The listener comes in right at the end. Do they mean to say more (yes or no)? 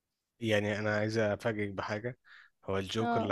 no